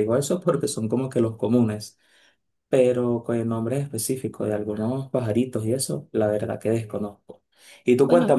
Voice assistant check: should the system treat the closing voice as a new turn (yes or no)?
no